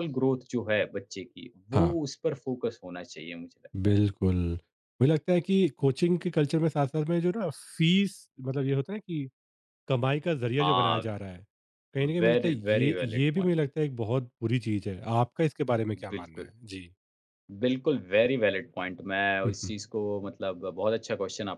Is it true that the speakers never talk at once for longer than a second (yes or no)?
no